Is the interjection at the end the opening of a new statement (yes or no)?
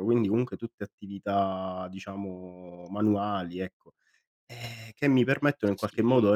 no